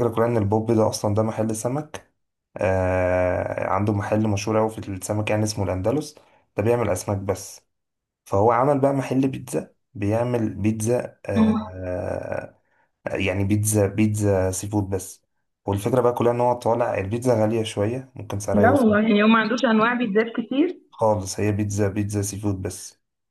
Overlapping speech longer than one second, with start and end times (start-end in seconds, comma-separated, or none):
none